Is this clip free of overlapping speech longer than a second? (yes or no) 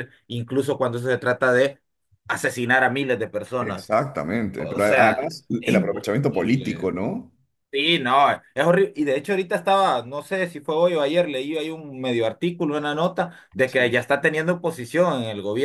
no